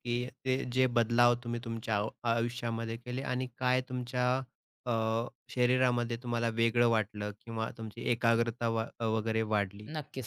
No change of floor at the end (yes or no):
no